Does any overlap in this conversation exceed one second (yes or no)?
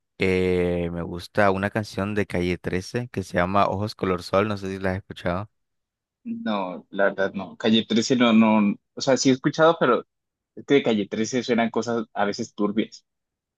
no